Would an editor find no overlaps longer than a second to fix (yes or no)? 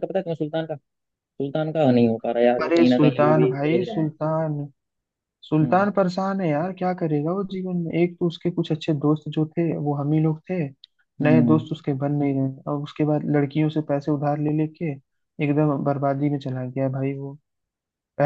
no